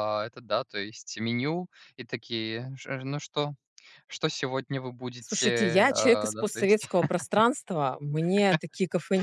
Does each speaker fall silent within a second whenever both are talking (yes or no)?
no